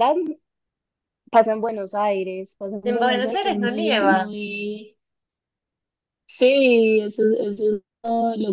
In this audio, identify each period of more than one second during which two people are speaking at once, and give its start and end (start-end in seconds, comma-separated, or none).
2.8-4.3